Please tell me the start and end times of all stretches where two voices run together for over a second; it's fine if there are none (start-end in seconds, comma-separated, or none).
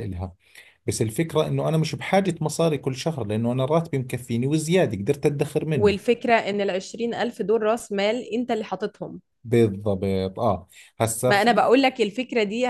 none